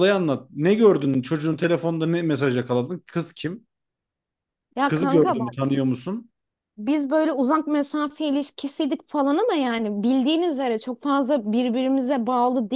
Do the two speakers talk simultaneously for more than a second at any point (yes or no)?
no